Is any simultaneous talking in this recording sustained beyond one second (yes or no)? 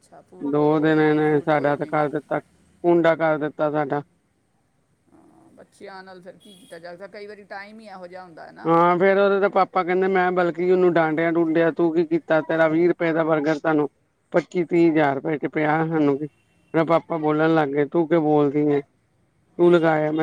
yes